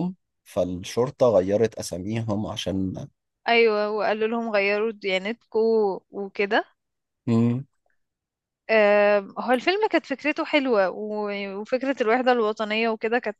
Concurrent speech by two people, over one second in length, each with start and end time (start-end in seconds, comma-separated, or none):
none